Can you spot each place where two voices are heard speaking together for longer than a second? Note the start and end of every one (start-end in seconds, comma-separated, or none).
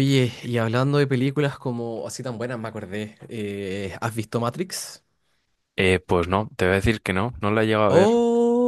none